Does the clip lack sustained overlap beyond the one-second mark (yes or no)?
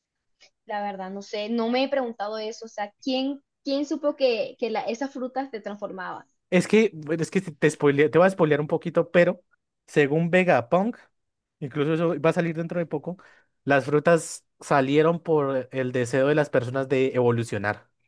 yes